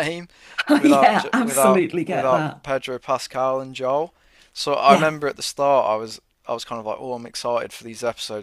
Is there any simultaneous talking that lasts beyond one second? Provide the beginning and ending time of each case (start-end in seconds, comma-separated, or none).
0.7-2.6